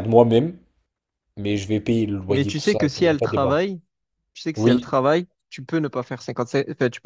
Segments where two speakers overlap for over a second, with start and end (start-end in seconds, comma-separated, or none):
2.3-3.5